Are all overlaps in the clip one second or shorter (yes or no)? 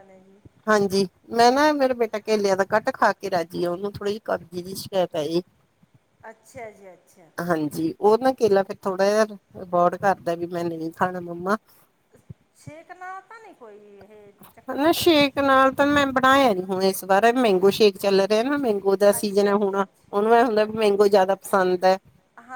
no